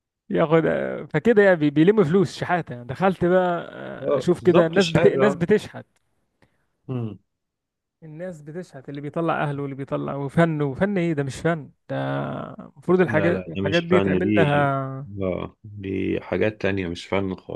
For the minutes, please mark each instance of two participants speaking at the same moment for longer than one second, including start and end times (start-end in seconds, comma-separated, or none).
4.0-5.4, 13.0-14.6